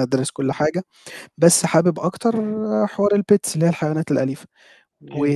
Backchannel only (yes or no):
yes